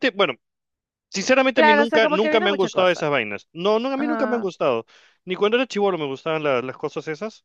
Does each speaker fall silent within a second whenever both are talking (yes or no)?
no